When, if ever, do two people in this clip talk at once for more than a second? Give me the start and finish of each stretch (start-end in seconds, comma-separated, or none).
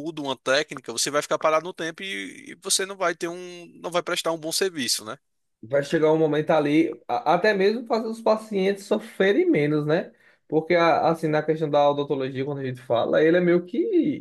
none